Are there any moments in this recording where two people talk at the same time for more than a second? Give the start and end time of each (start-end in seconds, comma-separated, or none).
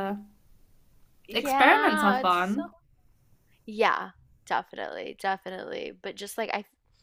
1.3-2.7